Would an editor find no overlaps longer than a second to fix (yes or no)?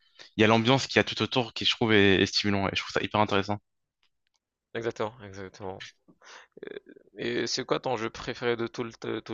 yes